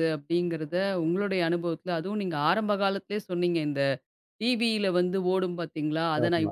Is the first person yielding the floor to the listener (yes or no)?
no